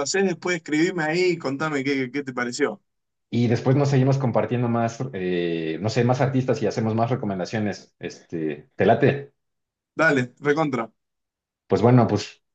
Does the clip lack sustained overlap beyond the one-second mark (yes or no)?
yes